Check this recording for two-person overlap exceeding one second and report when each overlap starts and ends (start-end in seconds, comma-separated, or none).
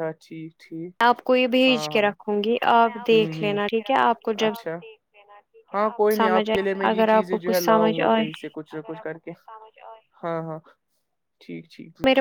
6.2-8.2